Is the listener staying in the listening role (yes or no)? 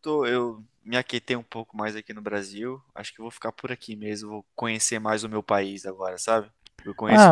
yes